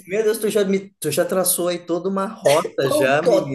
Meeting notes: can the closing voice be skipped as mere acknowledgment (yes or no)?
no